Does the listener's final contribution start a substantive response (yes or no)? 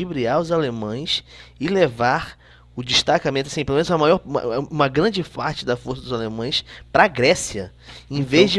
no